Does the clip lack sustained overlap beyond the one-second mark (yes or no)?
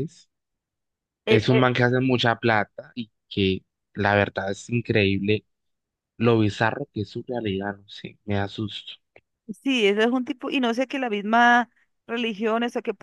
yes